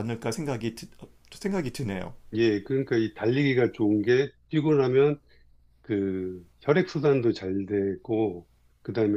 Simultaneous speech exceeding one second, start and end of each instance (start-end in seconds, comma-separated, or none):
none